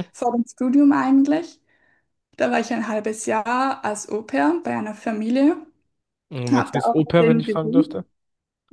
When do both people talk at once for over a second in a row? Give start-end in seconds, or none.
6.5-8.0